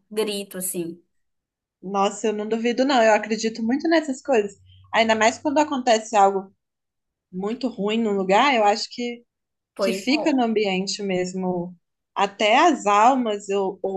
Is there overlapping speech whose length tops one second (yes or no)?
no